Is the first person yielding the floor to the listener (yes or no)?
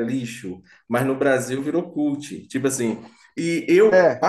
no